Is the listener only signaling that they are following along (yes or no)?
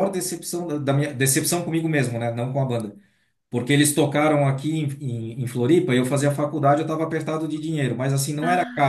yes